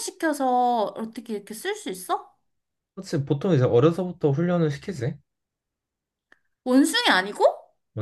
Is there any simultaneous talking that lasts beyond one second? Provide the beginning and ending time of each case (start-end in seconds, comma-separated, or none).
none